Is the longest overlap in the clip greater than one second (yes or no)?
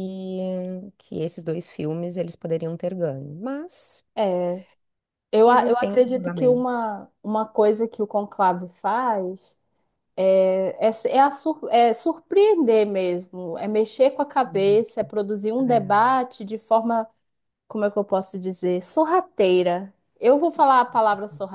yes